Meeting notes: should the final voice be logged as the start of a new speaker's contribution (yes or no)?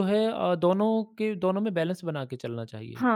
yes